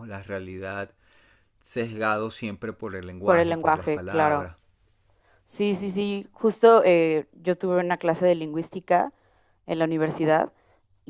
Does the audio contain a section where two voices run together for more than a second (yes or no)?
yes